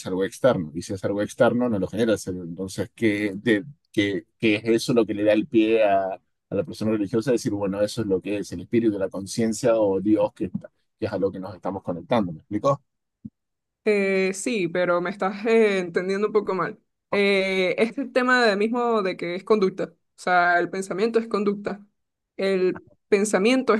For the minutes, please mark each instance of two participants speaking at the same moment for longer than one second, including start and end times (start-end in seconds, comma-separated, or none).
none